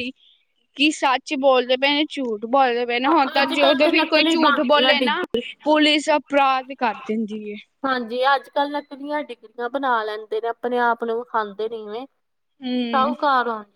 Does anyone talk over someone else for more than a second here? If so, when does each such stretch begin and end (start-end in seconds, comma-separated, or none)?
3.1-5.2